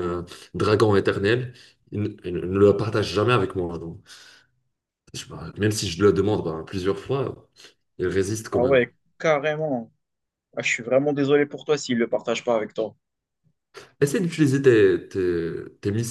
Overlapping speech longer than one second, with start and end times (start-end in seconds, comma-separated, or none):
none